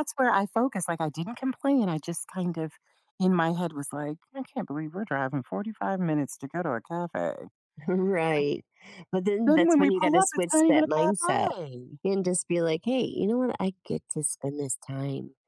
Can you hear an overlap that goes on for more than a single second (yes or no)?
yes